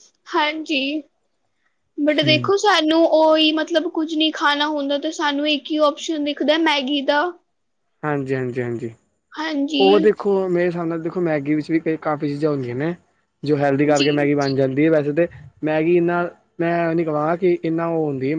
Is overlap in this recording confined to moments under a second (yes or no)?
yes